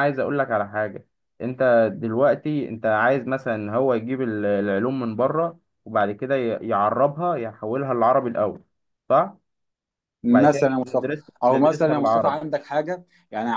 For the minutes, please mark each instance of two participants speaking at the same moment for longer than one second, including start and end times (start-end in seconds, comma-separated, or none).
10.3-12.4